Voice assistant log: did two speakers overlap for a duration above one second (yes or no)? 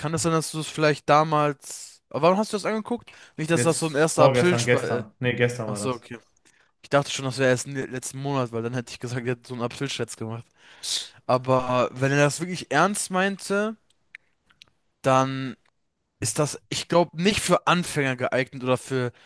yes